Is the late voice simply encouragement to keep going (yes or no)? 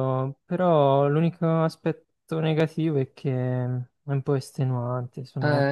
no